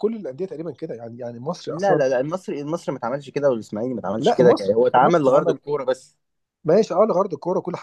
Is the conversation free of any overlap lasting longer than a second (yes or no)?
no